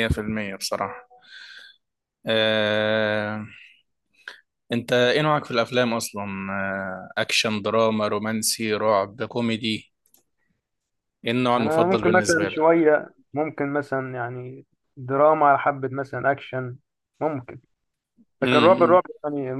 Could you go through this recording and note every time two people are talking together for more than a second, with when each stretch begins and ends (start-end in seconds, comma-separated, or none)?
11.6-12.8